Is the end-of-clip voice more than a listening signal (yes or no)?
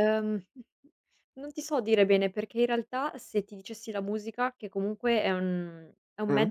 no